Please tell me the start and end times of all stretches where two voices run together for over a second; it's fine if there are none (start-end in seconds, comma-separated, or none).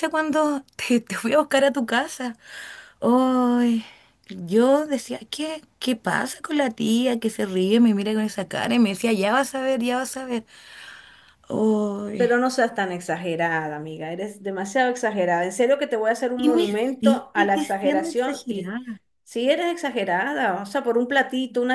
16.4-18.8